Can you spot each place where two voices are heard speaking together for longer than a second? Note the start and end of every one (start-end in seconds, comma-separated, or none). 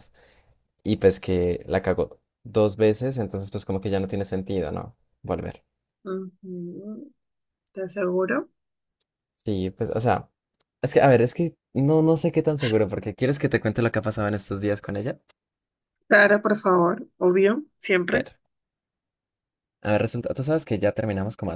none